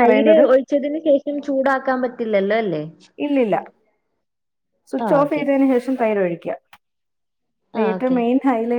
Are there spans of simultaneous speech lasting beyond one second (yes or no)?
no